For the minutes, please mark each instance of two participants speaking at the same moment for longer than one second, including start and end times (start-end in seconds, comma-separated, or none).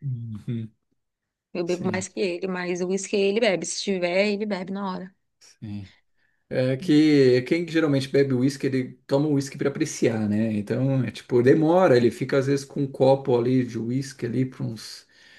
none